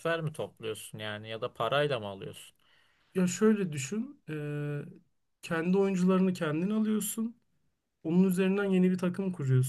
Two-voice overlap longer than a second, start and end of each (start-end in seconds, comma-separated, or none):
none